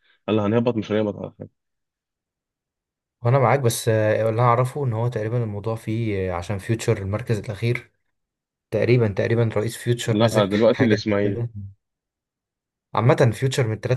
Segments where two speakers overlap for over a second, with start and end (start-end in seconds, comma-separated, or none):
10.1-11.4